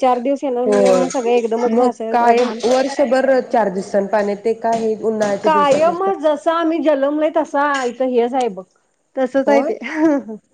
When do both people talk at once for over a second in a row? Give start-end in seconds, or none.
0.7-2.6